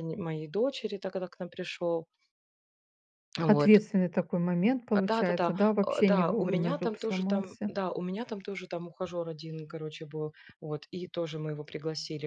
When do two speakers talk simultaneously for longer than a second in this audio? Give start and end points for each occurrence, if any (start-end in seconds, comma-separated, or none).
4.9-7.7